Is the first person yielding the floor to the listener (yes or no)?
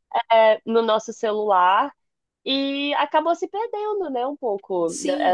yes